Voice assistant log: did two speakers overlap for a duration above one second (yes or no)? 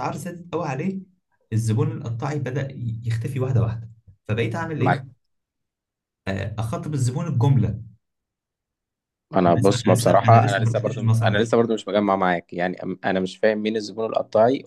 yes